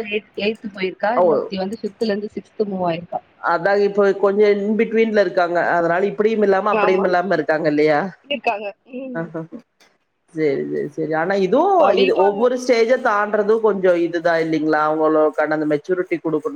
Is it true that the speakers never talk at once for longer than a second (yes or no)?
yes